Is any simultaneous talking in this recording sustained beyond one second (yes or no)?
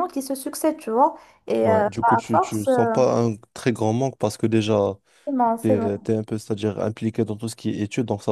yes